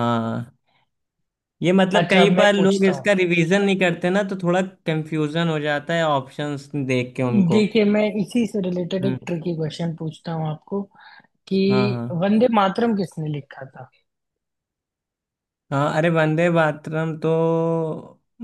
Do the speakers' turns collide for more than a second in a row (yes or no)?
yes